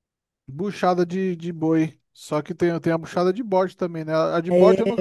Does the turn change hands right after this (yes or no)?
yes